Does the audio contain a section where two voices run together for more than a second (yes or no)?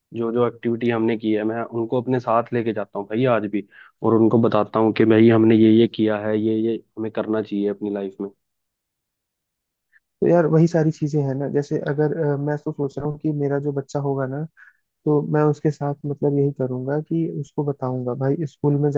no